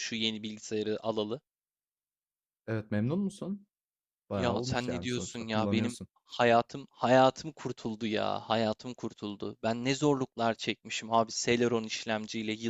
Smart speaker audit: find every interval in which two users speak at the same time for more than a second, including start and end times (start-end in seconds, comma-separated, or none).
4.3-6.1